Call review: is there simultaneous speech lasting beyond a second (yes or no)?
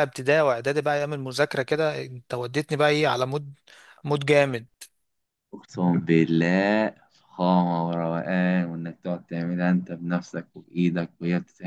no